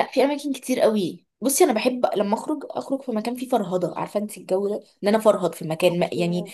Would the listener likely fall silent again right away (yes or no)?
yes